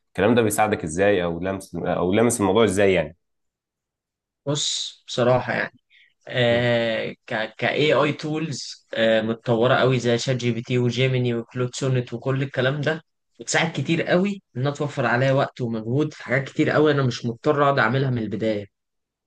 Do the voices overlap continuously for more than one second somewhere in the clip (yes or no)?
no